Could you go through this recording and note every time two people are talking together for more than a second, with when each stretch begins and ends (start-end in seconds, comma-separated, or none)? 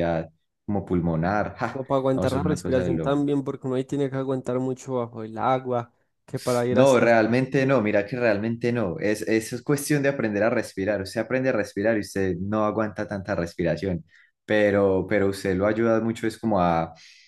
1.7-3.2